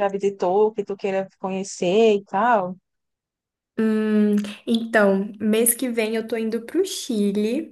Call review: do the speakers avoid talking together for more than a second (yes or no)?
yes